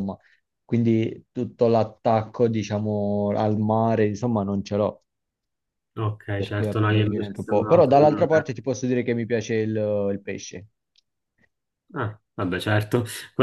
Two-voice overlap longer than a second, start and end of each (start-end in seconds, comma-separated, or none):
6.3-8.0